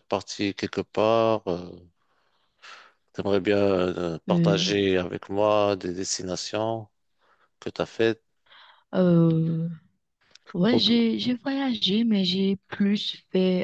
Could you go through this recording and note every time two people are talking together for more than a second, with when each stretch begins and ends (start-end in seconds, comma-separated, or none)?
none